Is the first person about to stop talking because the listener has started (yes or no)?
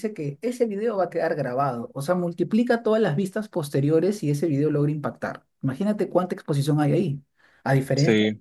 no